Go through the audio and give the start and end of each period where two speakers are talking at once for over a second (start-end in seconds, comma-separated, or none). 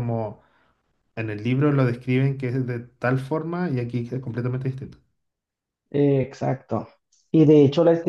none